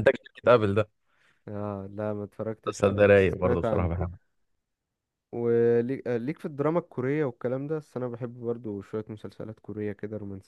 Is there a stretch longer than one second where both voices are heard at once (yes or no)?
yes